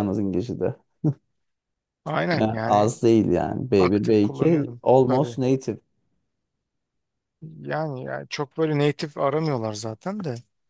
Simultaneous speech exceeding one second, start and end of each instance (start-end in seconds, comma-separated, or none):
3.8-5.4